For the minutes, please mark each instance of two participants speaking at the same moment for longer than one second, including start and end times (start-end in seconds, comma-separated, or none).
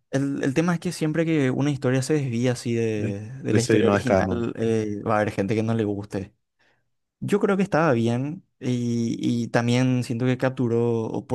3.0-4.5